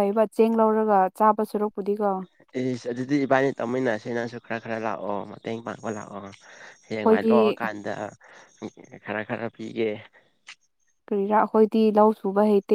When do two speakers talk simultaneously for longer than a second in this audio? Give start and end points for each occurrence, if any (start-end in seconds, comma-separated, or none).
none